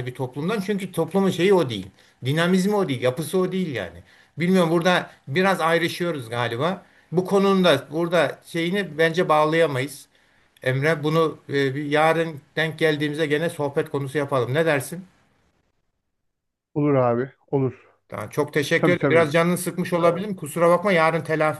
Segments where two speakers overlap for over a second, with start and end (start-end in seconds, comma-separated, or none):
none